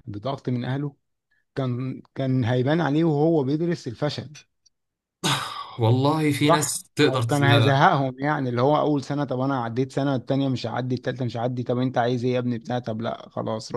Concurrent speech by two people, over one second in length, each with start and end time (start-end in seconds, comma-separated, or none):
6.5-7.9